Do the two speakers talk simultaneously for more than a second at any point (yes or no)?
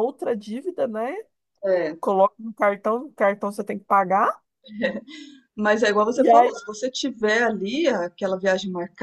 no